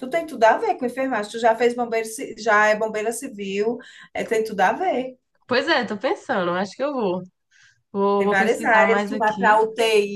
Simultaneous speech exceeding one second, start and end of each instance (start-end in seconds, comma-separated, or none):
8.2-9.6